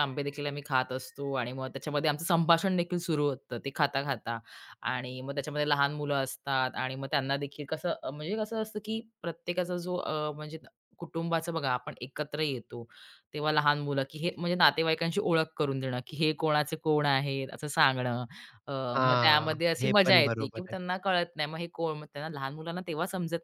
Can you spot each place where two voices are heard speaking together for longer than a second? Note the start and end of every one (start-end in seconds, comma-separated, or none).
19.0-20.8